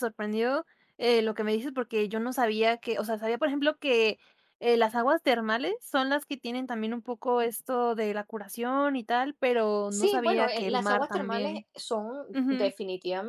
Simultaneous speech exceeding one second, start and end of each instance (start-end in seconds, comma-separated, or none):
9.9-11.7